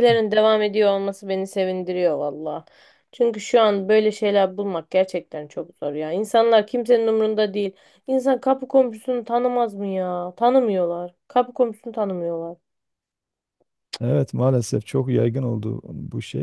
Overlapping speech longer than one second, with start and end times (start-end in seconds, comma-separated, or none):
none